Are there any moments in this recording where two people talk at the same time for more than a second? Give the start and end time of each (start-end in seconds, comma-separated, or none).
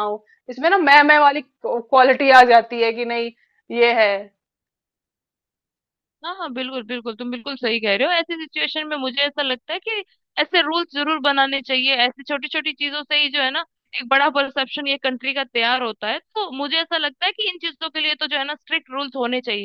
none